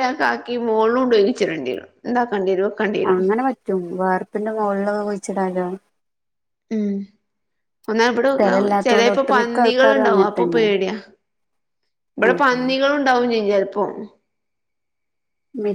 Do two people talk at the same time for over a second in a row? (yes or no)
yes